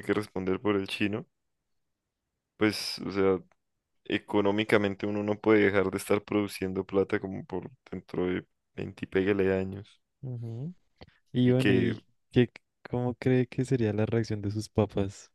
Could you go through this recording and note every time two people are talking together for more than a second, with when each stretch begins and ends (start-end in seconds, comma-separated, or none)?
none